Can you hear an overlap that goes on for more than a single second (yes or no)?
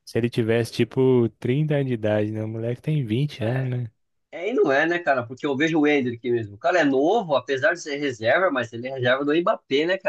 no